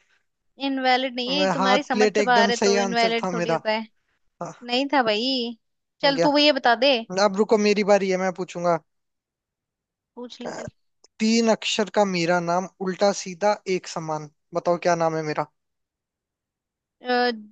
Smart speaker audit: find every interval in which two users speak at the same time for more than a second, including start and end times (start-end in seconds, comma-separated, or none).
1.3-3.6